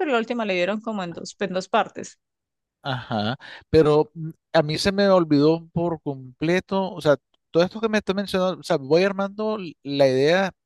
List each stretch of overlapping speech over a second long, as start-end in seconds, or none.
none